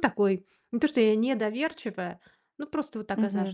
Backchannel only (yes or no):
no